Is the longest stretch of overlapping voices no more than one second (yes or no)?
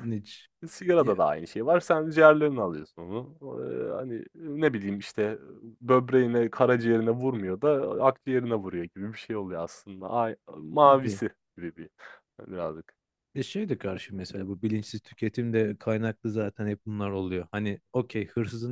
yes